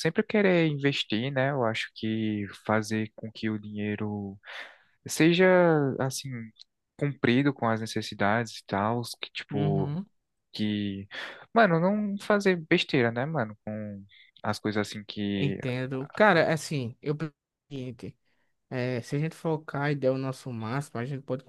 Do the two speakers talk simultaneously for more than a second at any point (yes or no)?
no